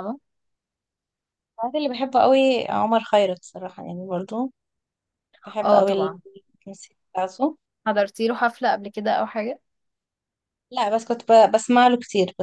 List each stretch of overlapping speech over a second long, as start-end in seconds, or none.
none